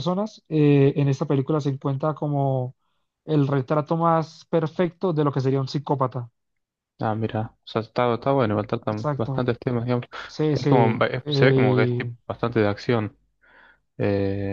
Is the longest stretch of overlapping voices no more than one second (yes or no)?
no